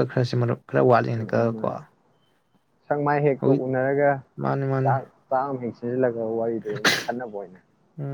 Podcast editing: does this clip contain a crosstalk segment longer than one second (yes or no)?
no